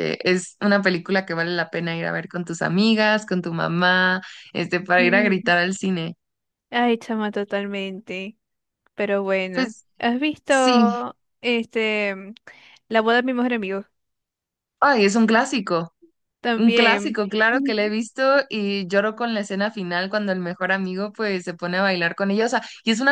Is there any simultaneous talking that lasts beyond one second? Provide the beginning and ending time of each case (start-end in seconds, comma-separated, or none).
16.6-17.9